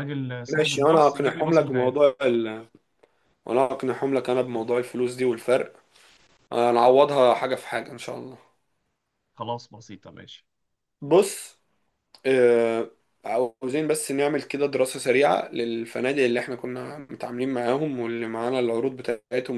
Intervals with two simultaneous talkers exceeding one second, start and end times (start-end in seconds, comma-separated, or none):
0.5-2.1